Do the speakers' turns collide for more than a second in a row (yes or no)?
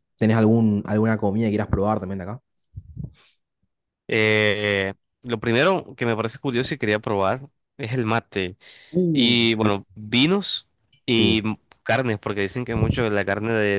no